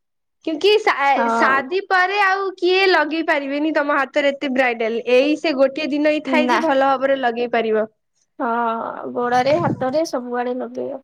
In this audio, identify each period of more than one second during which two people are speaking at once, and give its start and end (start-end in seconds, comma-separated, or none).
none